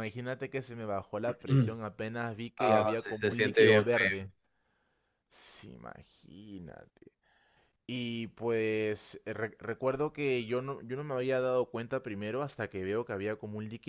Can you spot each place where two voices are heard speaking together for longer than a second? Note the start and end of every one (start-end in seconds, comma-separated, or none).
2.6-4.3